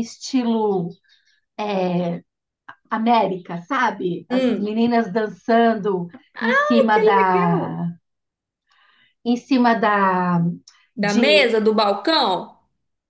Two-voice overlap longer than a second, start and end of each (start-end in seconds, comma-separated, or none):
6.6-7.8